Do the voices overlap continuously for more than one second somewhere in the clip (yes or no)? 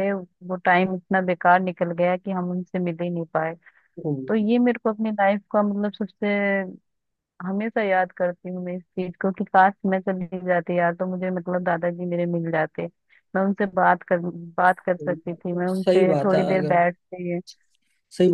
yes